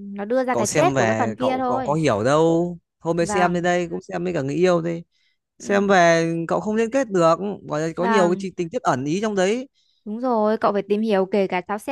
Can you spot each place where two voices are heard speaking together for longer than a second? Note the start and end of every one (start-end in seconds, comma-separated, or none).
0.5-2.0